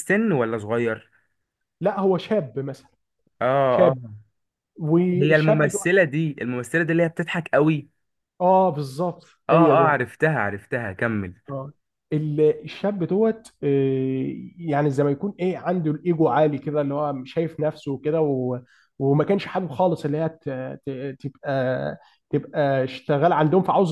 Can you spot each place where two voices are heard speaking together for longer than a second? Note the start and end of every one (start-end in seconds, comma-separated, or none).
none